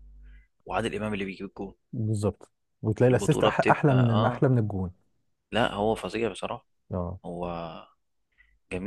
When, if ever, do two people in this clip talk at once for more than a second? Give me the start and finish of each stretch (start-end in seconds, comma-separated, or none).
3.1-4.4